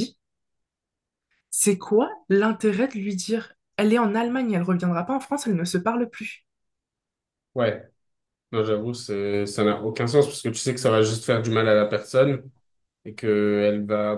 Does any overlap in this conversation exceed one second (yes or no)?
no